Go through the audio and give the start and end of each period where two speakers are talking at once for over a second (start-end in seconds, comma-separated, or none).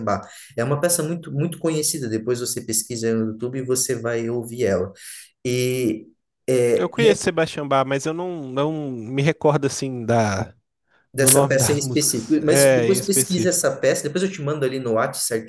11.2-13.7